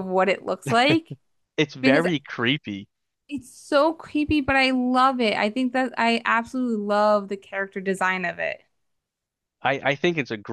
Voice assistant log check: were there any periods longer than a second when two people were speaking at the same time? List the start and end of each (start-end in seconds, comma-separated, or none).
none